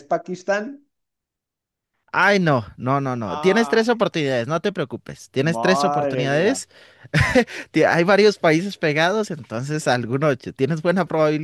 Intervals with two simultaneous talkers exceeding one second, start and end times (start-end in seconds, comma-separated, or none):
5.4-6.6